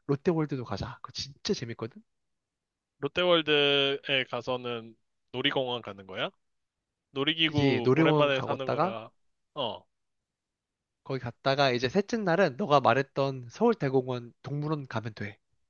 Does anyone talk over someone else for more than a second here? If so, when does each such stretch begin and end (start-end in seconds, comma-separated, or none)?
7.4-9.0